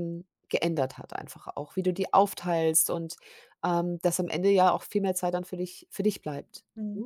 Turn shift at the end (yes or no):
yes